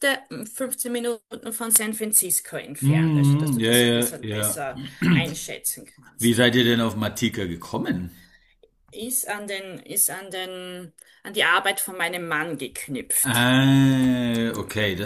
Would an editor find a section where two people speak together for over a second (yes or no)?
yes